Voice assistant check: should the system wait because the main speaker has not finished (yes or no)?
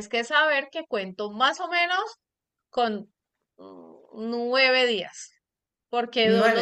yes